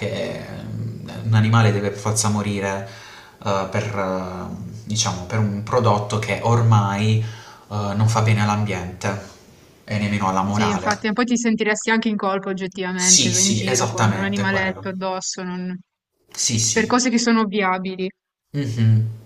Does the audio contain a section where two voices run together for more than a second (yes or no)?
yes